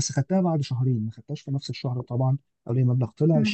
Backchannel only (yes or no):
yes